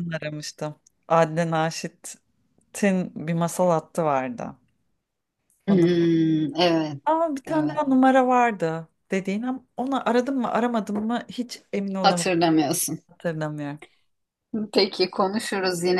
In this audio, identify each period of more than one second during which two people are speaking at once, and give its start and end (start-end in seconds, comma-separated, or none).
none